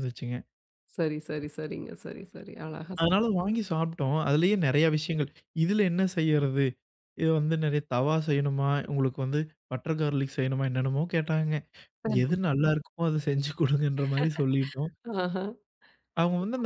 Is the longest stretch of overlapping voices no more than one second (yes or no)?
yes